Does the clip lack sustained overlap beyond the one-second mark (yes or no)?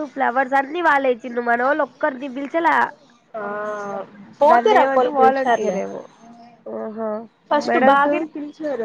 no